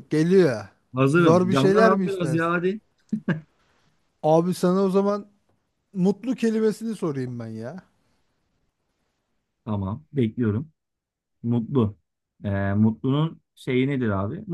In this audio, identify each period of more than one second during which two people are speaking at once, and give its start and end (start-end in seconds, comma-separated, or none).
1.1-2.5